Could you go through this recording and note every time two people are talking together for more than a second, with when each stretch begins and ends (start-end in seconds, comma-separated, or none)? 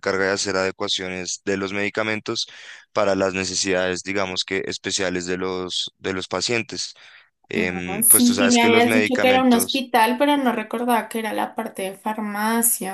7.6-9.9